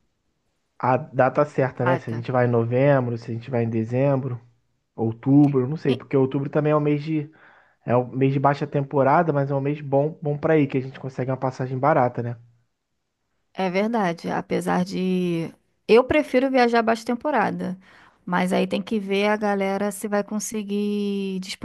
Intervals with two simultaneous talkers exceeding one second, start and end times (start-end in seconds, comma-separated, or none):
none